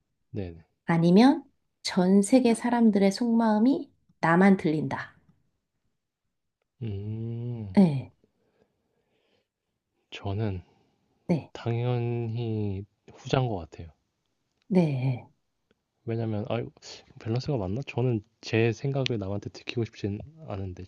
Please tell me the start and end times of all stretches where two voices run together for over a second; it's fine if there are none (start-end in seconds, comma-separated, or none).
none